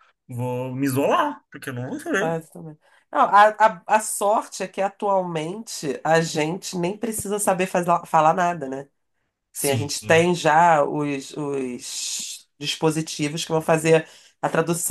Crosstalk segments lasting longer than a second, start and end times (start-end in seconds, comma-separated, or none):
none